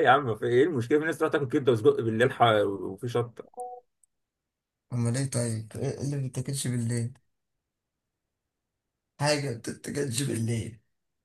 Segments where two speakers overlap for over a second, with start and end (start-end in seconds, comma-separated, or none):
none